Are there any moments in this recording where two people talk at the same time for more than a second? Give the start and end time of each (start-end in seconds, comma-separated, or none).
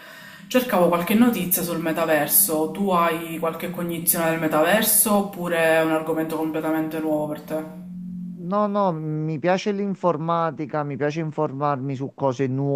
none